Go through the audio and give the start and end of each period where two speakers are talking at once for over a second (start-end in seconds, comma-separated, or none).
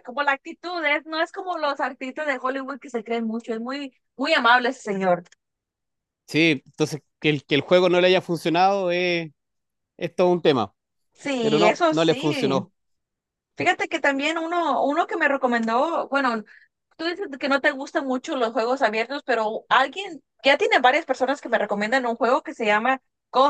11.4-12.6